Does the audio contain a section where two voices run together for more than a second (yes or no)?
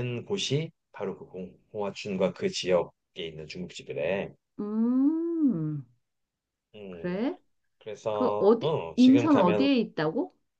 yes